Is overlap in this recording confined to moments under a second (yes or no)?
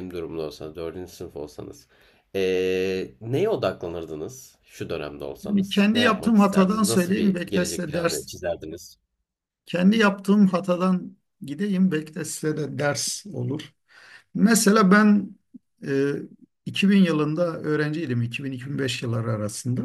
no